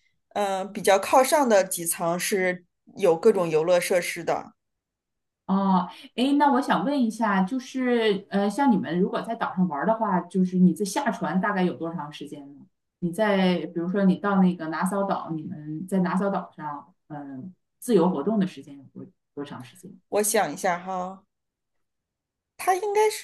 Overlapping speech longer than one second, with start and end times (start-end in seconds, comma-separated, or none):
none